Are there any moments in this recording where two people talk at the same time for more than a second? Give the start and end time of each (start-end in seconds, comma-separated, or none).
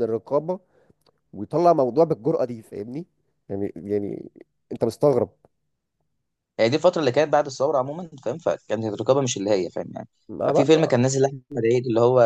none